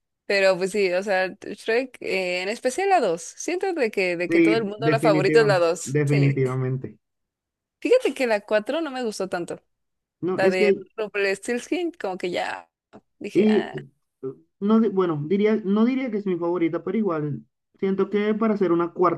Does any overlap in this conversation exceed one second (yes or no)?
yes